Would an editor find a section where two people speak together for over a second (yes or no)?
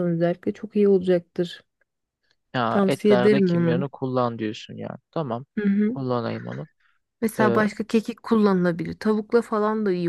yes